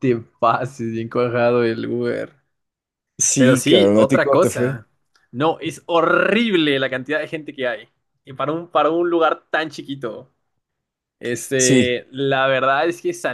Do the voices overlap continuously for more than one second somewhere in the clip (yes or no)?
yes